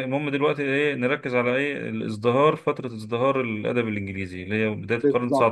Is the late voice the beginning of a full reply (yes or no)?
yes